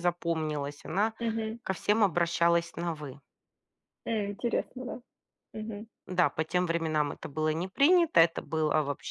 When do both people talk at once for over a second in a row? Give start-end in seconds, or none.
none